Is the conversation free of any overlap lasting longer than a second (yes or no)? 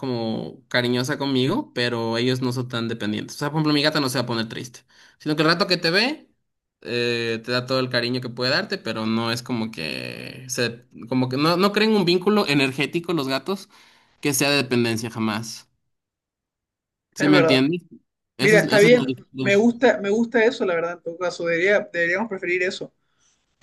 no